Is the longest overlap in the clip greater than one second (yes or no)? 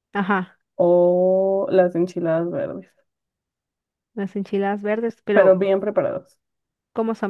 no